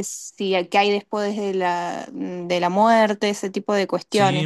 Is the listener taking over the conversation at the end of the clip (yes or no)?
yes